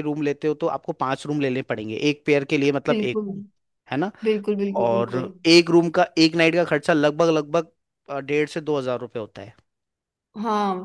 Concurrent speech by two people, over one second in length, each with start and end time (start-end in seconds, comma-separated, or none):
none